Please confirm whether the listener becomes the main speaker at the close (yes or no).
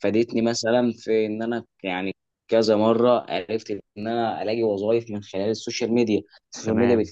no